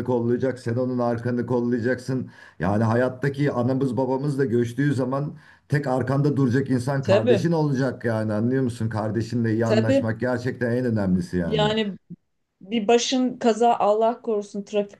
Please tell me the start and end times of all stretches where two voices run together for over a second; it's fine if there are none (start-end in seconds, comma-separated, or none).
none